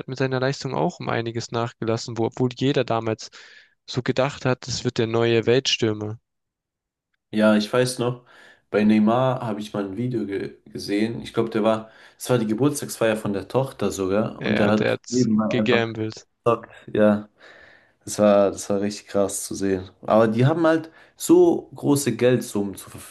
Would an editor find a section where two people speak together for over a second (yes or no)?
yes